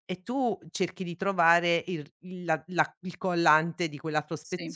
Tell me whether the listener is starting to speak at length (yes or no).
no